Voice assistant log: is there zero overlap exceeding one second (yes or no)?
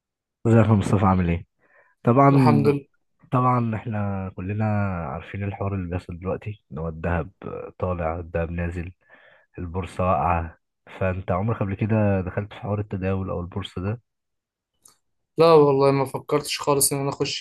yes